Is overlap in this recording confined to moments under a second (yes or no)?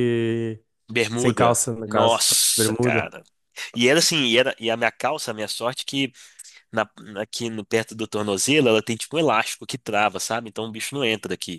no